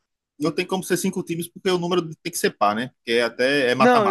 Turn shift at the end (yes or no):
yes